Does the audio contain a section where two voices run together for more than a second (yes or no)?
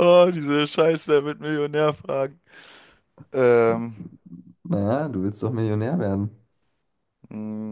no